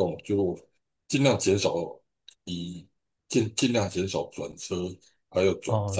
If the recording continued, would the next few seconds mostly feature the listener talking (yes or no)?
yes